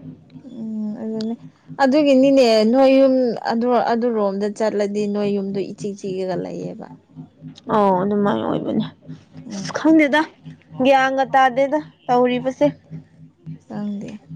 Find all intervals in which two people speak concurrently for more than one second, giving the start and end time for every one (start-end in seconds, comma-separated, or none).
none